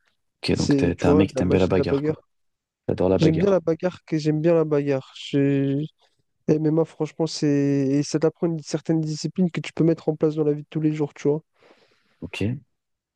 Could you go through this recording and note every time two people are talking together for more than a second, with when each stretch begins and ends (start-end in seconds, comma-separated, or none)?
0.5-2.1